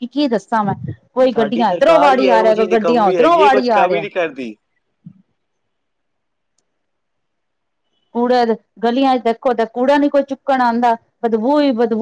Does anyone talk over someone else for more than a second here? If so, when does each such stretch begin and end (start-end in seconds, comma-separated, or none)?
1.3-4.0